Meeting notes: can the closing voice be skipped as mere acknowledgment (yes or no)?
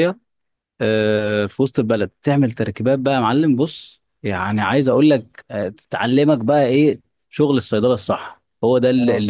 yes